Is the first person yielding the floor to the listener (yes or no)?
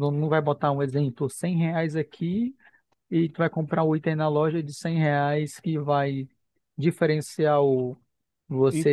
yes